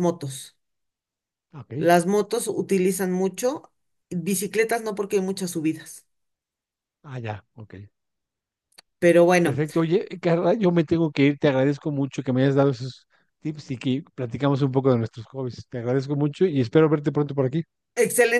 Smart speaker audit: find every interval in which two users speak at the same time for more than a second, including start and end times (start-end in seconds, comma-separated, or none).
none